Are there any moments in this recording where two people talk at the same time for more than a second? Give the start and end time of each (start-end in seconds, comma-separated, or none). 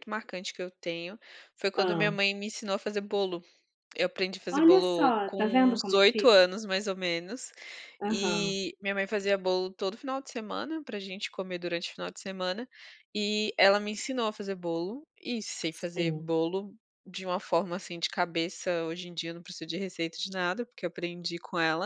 4.5-6.5